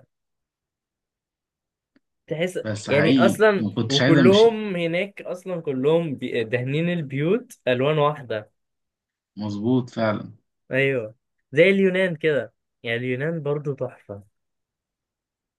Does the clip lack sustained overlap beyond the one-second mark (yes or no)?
no